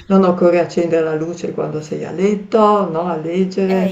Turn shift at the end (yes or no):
yes